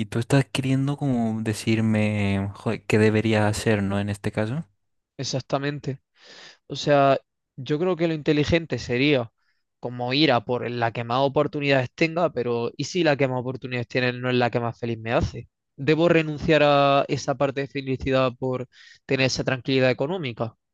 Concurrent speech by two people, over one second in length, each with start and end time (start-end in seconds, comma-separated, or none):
none